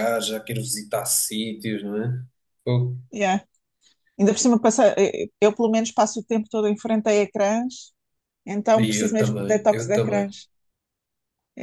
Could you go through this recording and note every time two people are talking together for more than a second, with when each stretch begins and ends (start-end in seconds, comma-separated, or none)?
8.8-10.3